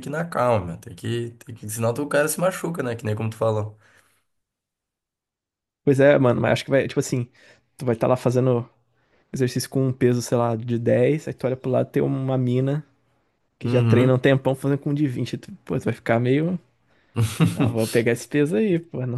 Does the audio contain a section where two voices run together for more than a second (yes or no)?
no